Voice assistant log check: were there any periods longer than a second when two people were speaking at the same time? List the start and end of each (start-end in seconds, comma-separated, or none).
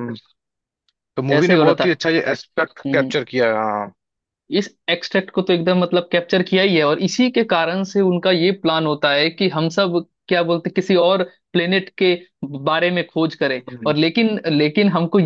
none